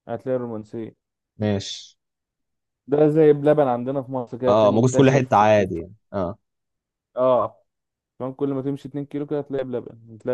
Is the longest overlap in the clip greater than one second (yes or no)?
yes